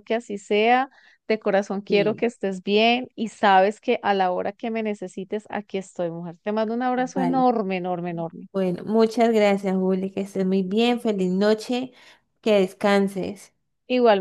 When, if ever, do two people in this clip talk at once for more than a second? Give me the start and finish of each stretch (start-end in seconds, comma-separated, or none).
none